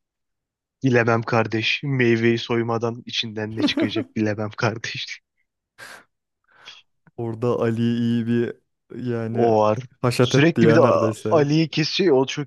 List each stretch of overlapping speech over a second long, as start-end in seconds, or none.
10.2-11.5